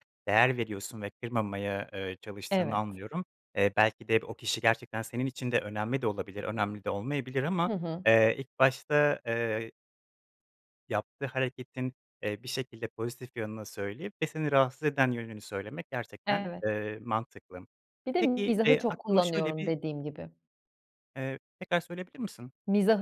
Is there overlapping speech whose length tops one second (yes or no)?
yes